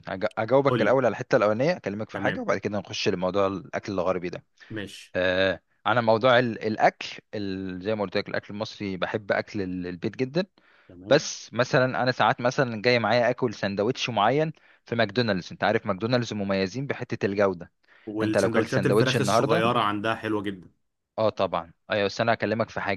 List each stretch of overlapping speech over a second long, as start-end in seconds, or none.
18.2-19.6